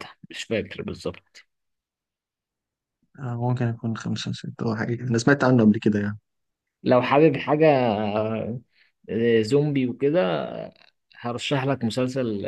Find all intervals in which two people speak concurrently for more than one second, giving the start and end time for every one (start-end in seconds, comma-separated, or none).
none